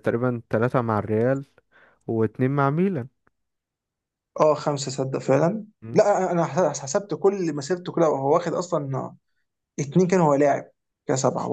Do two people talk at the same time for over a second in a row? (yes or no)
no